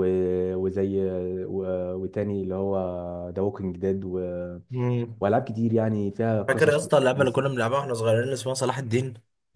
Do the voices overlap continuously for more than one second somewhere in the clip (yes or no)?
no